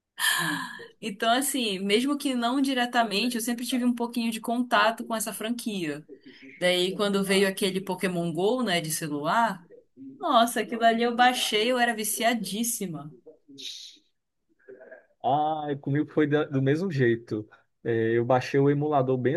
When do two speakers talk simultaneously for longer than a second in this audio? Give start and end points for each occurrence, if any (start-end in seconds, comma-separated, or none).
none